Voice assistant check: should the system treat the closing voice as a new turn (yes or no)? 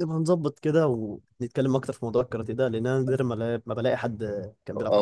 yes